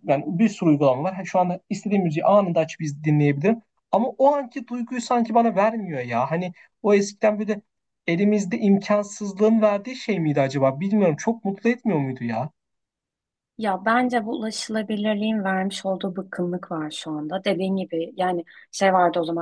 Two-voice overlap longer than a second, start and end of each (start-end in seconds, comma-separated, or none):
none